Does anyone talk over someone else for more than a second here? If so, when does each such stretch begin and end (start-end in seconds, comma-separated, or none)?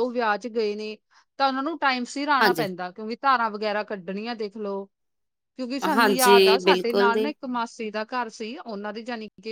6.0-7.3